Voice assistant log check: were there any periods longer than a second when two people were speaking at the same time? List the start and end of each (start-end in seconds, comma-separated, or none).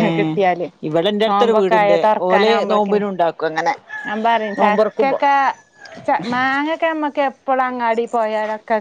1.3-3.0